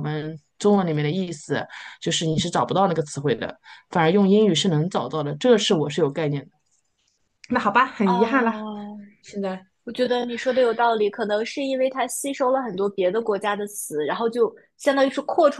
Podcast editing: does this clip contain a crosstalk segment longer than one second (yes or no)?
no